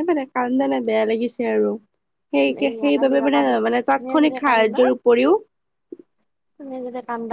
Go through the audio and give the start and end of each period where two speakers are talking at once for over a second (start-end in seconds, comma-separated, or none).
2.6-4.8